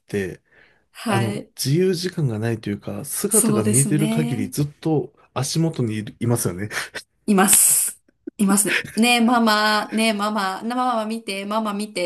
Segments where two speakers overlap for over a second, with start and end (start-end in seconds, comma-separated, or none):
3.3-4.5